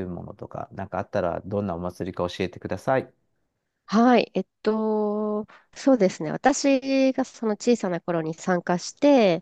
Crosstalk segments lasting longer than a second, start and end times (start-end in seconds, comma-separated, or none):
none